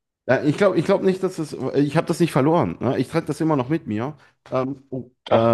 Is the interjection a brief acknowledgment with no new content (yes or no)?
yes